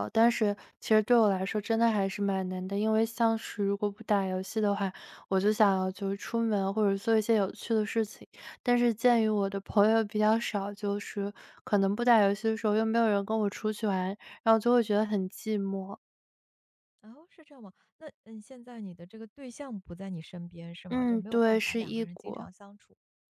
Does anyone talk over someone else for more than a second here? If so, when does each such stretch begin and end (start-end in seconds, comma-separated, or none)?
20.9-22.5